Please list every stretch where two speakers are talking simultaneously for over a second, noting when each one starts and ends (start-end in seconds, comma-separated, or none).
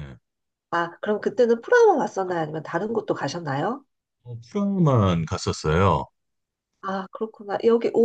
none